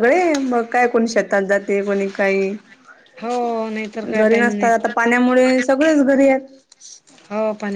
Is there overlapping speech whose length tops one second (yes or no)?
no